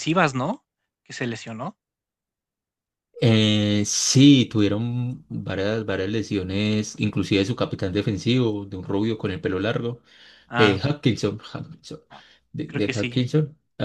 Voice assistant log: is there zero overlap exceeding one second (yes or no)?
yes